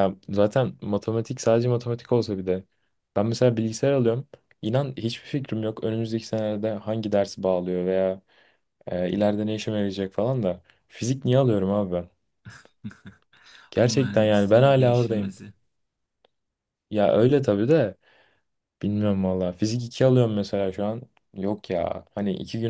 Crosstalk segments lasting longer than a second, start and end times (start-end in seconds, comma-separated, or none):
13.8-15.3